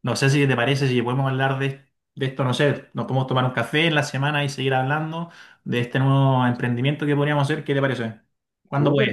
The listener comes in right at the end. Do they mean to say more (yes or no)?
yes